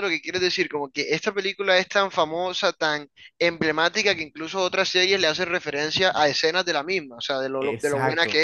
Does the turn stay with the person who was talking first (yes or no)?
no